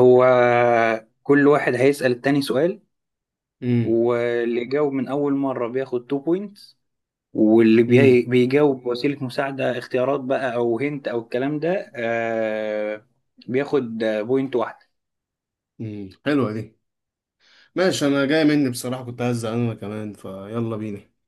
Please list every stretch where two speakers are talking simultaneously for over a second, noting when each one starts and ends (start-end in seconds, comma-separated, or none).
none